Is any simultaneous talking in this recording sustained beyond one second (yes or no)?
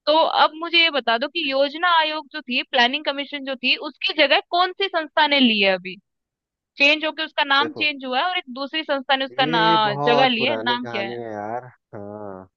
yes